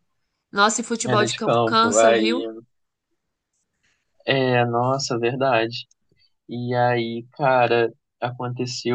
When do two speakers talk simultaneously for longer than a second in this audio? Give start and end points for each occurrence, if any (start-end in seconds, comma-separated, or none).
1.0-2.4